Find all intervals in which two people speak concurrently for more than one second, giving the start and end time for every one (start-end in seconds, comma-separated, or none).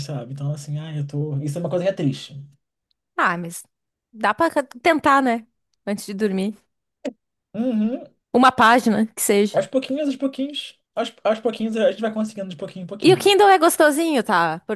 none